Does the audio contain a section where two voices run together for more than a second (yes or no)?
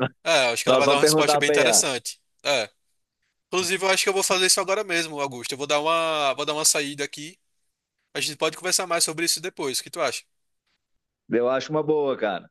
yes